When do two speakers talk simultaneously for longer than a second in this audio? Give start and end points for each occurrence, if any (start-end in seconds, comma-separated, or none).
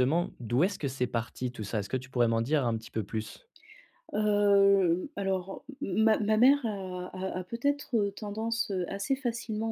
none